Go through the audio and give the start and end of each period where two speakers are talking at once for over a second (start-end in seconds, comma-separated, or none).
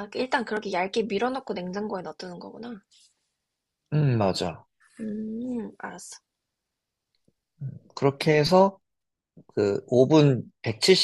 none